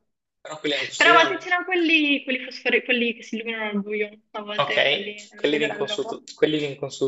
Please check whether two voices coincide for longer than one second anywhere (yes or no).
yes